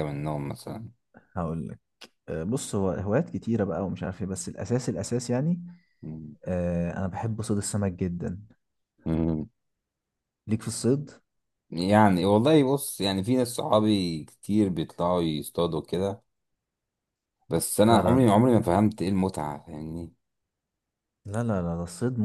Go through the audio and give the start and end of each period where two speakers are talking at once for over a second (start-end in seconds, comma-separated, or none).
none